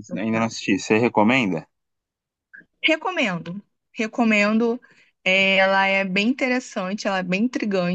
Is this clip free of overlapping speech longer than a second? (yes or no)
yes